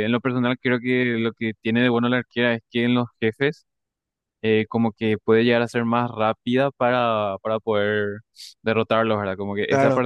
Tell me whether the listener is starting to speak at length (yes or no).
no